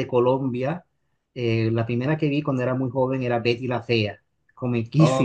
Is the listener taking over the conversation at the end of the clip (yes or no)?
yes